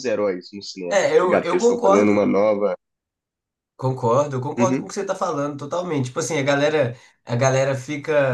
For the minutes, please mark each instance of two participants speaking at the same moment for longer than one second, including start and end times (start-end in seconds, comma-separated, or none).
0.9-2.3